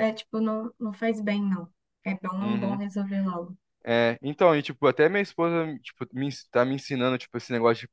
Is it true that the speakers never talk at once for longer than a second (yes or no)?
yes